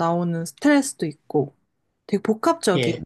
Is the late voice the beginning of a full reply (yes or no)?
no